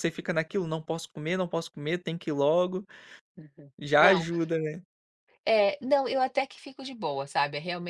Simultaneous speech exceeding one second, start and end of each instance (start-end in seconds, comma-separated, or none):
none